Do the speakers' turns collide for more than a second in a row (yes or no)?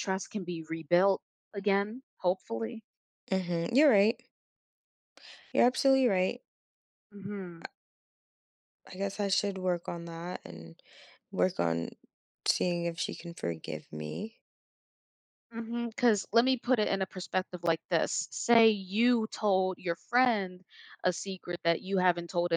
no